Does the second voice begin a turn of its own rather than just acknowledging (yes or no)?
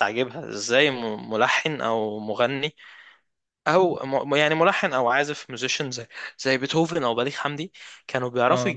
no